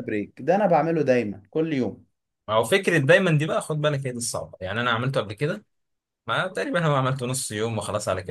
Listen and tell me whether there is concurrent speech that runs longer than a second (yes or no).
no